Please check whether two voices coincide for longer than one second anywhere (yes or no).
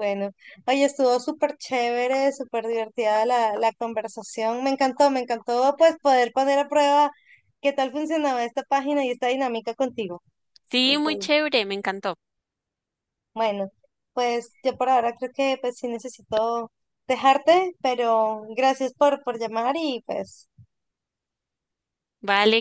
no